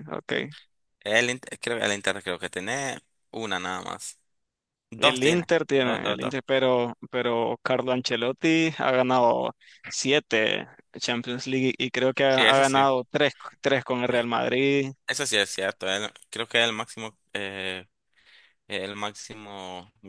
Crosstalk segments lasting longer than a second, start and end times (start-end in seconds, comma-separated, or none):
5.0-6.3